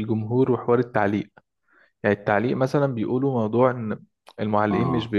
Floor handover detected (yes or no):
no